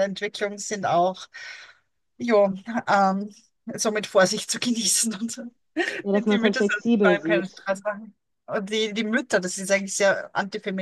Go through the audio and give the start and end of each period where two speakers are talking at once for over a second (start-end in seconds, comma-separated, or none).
6.1-7.7